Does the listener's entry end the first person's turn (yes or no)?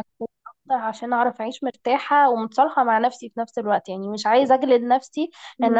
no